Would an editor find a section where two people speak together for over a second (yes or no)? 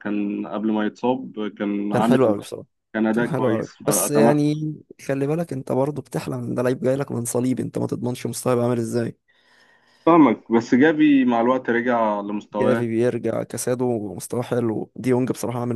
yes